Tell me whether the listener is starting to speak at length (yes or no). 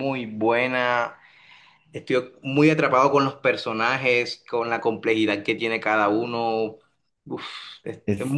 yes